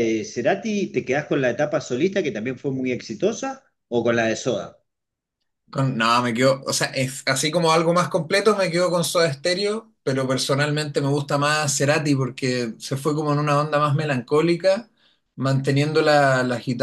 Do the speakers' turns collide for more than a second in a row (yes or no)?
no